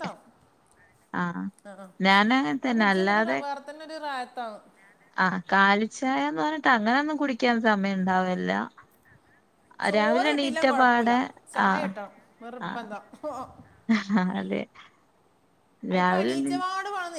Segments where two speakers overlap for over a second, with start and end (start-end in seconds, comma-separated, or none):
none